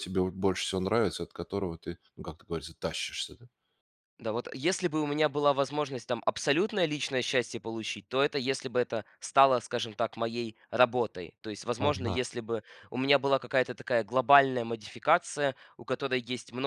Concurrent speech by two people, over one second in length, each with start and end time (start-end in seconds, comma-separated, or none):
none